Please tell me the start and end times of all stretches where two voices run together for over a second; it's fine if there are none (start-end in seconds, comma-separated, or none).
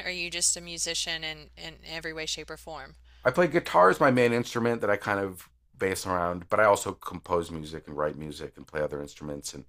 none